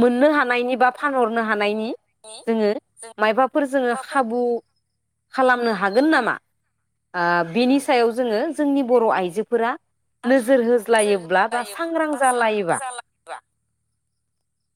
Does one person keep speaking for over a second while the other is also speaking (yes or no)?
yes